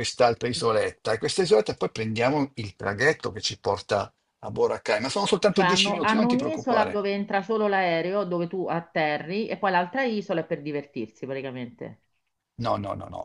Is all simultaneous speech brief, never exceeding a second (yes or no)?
no